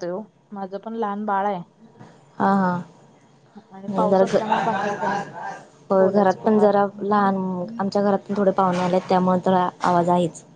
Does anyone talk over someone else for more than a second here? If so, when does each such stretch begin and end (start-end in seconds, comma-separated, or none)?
6.0-7.3